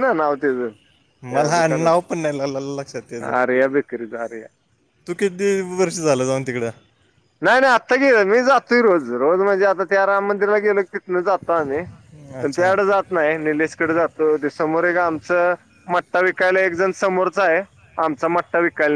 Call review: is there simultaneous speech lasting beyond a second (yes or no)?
no